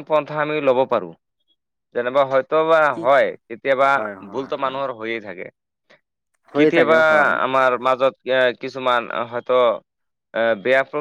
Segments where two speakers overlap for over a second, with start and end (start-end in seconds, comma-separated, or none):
none